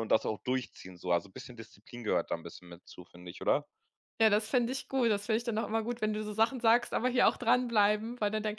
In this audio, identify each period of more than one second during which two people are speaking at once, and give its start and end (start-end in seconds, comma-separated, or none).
none